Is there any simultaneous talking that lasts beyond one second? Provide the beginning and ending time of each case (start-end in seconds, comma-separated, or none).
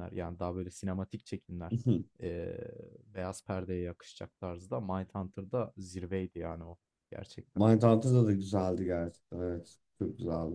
none